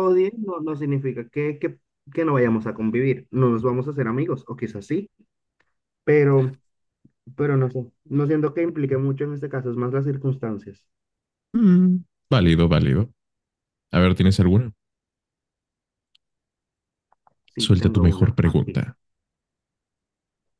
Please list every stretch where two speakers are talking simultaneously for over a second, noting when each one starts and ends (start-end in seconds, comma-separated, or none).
17.6-18.9